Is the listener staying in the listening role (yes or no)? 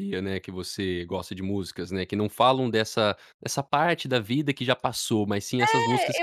no